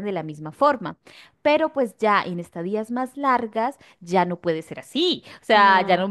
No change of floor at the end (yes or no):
yes